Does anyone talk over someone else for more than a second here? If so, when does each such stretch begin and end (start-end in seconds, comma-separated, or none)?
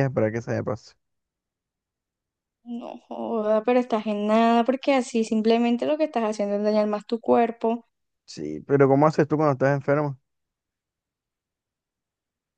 none